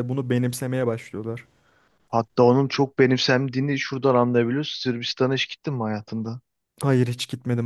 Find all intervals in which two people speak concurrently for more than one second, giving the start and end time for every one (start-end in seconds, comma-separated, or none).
none